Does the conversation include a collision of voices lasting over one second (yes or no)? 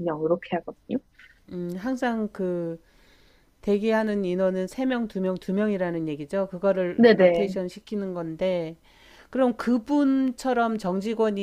no